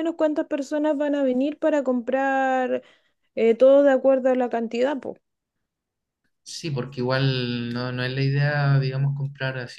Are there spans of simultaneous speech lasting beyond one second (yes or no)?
no